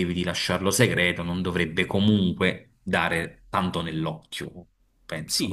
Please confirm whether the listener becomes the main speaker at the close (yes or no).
yes